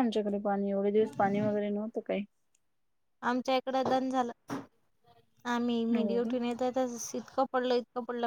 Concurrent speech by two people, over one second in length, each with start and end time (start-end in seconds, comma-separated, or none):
none